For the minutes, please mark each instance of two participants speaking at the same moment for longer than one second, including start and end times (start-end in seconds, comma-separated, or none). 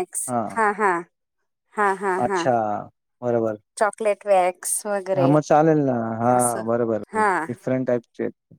none